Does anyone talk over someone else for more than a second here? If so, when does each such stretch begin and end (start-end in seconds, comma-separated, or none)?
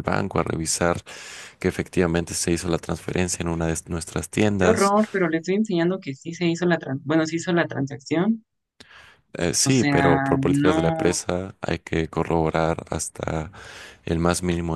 9.6-11.2